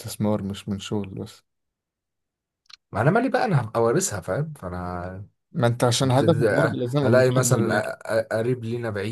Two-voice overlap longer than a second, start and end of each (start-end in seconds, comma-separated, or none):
6.2-7.9